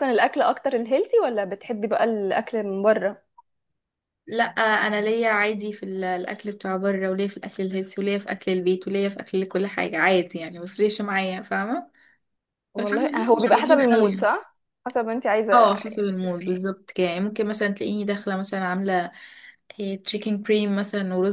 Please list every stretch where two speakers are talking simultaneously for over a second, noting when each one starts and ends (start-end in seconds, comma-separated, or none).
12.8-14.3